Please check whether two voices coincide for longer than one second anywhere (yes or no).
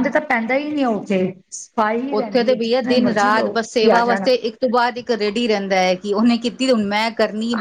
yes